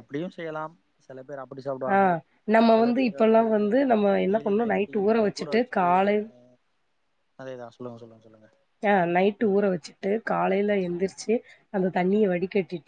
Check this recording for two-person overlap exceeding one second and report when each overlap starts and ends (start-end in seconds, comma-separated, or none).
none